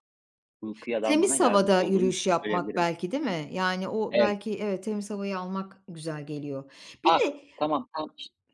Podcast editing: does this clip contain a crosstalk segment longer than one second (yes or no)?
yes